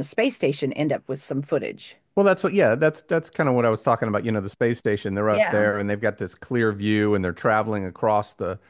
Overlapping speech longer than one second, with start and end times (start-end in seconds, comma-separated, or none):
none